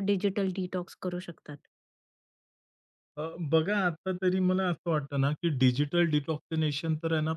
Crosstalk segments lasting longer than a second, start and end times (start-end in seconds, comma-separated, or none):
none